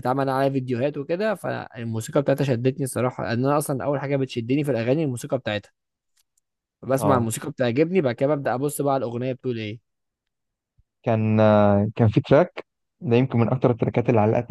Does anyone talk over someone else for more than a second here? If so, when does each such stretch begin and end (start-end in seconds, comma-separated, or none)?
none